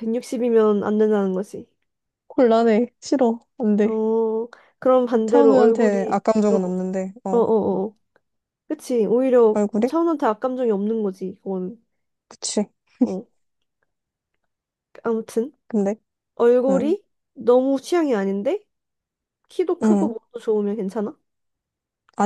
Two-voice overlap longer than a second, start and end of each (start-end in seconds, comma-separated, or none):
5.2-7.5